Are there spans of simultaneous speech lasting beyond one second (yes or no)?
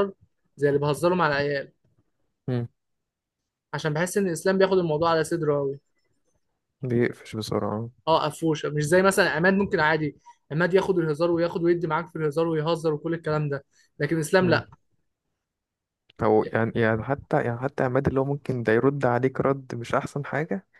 no